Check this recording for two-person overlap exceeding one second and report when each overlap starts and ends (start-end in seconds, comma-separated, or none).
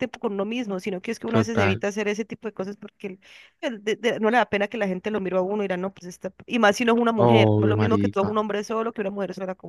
7.2-8.4